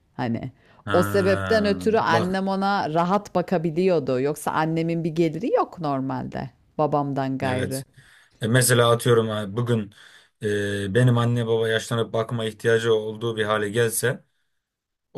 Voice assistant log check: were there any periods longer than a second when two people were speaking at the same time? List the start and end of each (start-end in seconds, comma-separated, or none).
0.9-2.4